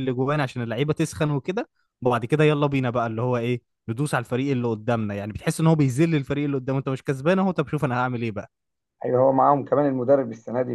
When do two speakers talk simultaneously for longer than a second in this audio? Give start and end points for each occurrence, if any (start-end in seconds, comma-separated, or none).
none